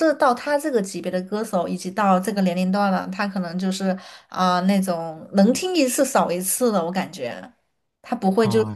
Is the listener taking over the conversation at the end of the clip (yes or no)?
no